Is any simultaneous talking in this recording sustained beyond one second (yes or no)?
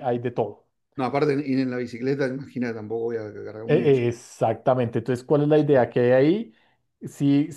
no